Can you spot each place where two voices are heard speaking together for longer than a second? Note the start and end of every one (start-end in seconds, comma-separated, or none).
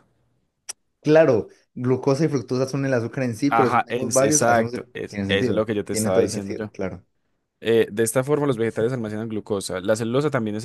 3.5-6.7